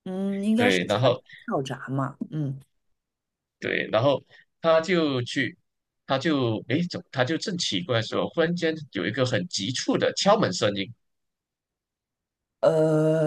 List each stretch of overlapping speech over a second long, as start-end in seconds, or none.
none